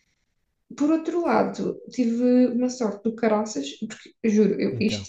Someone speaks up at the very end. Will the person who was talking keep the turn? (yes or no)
yes